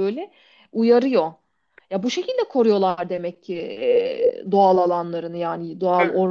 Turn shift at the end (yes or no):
yes